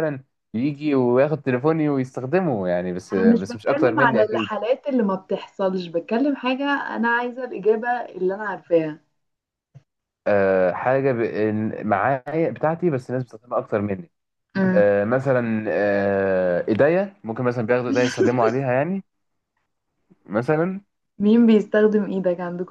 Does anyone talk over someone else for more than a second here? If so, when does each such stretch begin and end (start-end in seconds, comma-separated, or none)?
3.1-4.5